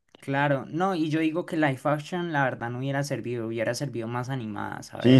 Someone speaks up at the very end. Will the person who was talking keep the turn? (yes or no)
no